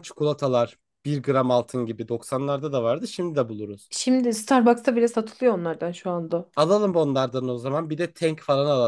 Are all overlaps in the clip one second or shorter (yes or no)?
yes